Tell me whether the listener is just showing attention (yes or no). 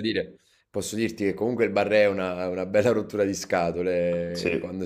yes